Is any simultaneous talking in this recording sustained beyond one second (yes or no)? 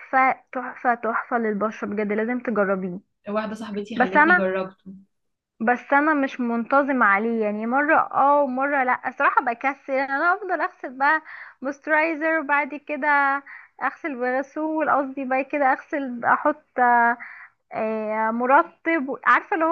no